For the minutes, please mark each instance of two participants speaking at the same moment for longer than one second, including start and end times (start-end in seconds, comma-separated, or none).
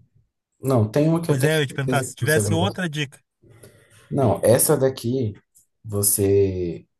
1.2-2.5